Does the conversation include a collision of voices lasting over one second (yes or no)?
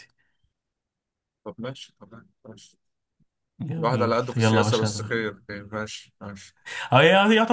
yes